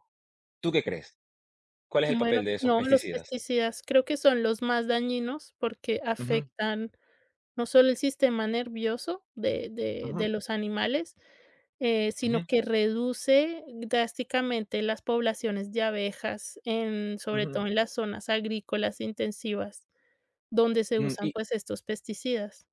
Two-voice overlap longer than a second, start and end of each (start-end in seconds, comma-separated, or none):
2.1-3.3